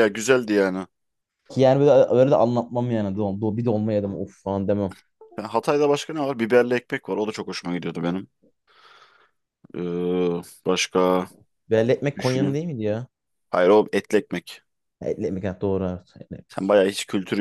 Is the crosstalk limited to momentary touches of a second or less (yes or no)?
yes